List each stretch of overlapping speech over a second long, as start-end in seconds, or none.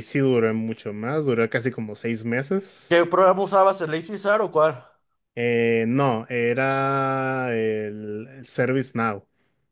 none